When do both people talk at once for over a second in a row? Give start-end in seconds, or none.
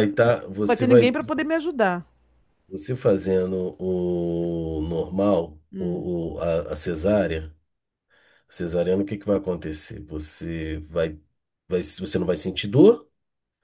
none